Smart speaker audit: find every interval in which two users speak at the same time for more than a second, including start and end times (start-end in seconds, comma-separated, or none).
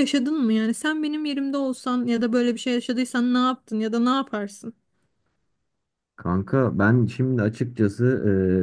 none